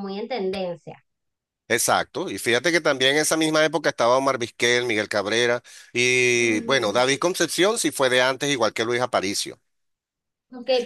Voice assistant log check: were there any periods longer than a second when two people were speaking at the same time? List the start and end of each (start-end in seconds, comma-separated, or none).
none